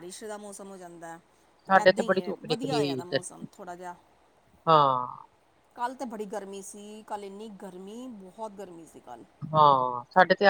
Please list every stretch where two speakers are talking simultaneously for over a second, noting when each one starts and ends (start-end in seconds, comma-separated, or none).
1.8-3.2